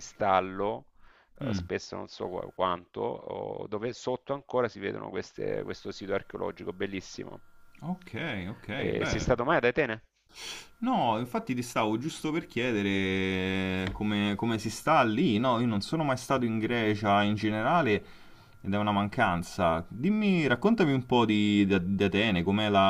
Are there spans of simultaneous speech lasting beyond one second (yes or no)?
no